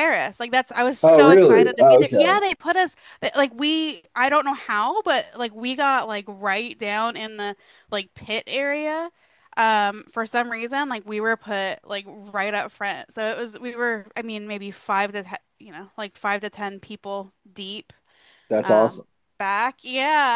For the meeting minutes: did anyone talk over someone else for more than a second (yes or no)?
yes